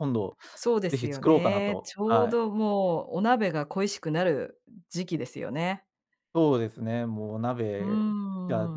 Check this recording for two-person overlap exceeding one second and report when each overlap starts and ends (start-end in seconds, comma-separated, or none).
0.9-2.4